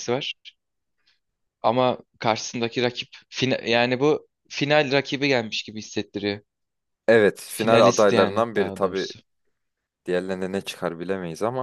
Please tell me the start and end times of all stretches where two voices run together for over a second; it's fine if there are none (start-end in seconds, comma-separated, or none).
7.5-9.1